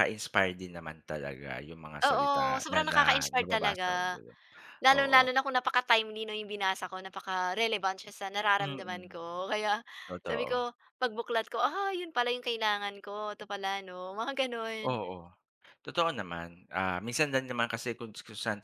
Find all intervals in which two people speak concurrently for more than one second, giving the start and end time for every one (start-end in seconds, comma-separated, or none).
2.0-4.2